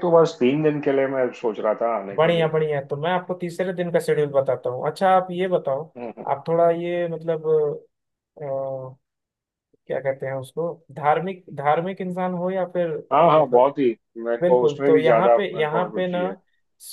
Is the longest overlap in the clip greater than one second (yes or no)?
yes